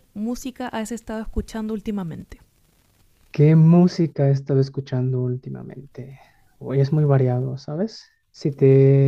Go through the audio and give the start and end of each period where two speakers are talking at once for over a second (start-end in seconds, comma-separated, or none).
none